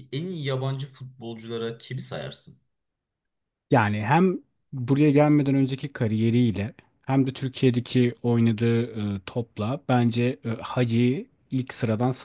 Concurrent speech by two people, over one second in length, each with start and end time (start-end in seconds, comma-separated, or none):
none